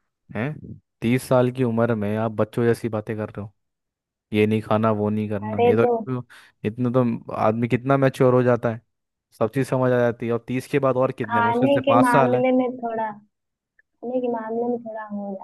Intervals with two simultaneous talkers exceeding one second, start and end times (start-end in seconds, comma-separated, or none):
11.2-12.4